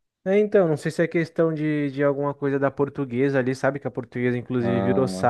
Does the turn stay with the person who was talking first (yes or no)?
yes